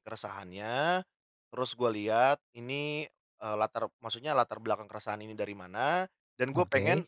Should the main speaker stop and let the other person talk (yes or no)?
no